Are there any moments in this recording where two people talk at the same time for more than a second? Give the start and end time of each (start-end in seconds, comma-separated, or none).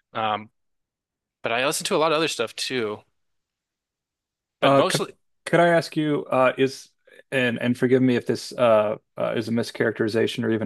none